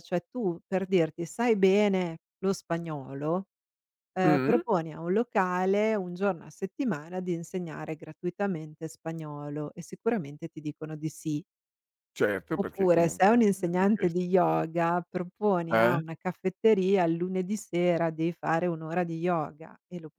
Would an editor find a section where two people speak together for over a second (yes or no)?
yes